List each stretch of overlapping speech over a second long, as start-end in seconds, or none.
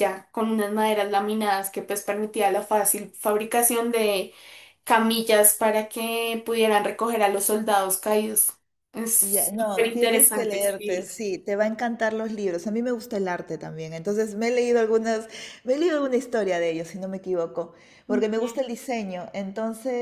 9.2-11.1